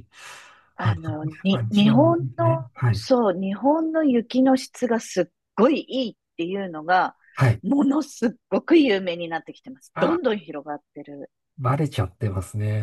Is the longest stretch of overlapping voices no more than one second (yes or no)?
no